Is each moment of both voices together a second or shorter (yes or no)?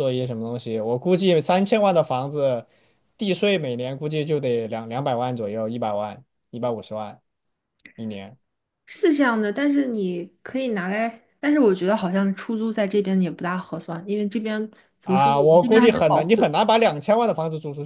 no